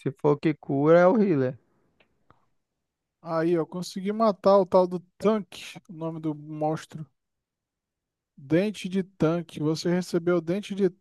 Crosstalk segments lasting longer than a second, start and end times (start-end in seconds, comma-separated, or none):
none